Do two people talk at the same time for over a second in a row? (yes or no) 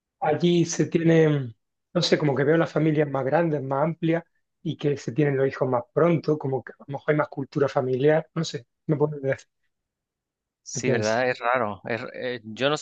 no